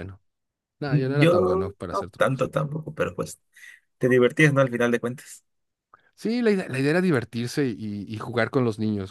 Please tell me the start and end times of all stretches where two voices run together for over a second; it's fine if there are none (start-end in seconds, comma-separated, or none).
0.9-2.5